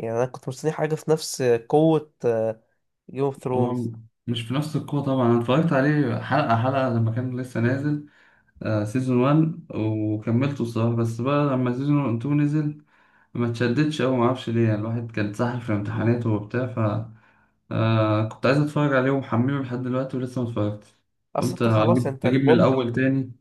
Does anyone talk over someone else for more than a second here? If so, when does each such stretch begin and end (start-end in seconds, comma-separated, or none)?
21.4-22.8